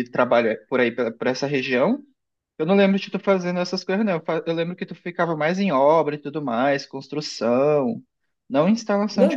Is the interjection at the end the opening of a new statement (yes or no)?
yes